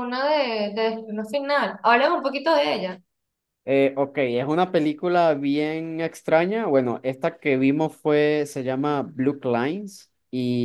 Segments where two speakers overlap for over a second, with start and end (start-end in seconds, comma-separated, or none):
none